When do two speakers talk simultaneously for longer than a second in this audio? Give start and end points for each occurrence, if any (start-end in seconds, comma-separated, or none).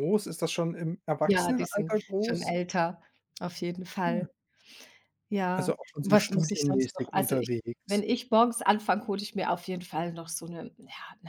1.2-2.5, 5.5-8.0